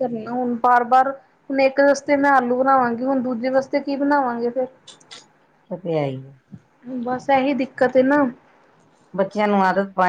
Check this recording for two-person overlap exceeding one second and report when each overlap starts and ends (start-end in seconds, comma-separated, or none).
none